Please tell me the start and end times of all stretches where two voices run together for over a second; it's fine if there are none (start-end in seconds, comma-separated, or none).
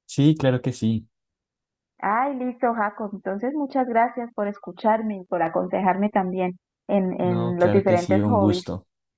7.2-8.7